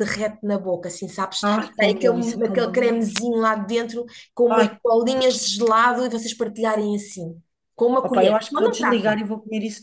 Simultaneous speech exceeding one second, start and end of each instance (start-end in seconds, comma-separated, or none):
1.4-3.1, 8.0-9.2